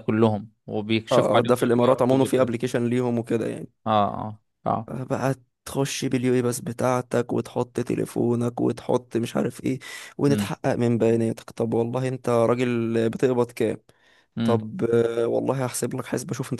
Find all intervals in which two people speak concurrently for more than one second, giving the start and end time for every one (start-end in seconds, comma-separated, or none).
1.1-2.5